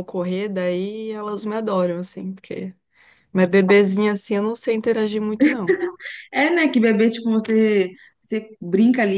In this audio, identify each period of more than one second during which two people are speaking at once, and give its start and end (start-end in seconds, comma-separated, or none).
none